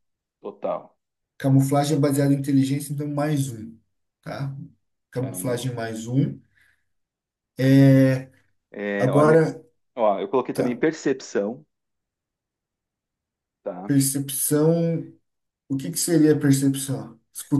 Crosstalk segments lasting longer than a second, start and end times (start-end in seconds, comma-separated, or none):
none